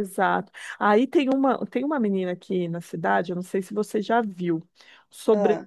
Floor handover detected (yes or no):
no